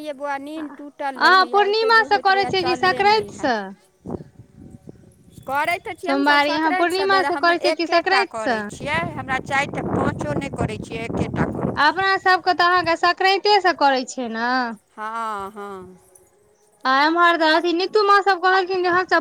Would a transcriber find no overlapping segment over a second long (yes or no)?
no